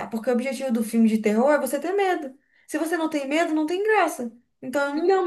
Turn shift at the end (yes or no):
yes